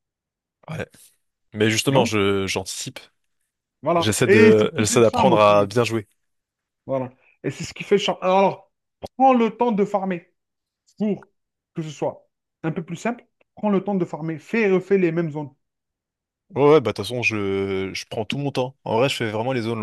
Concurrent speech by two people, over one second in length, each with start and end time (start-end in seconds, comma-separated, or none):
4.0-5.7